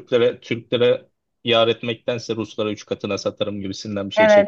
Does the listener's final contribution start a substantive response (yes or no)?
yes